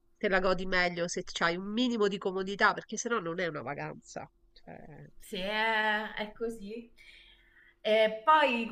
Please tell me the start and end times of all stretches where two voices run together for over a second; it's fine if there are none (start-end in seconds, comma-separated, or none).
none